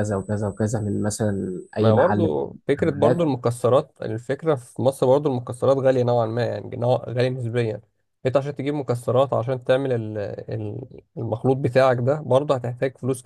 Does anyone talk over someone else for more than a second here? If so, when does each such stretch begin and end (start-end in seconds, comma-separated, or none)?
1.8-3.3